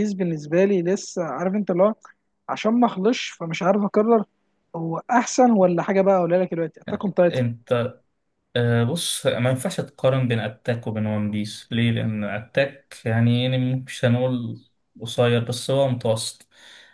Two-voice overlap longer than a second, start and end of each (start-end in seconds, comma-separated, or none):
none